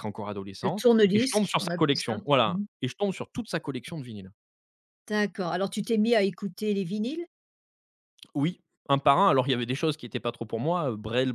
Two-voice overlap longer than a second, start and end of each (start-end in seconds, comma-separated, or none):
0.6-2.6